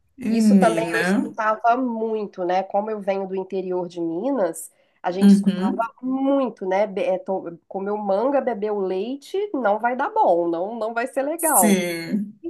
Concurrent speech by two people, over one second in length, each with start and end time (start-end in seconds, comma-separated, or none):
none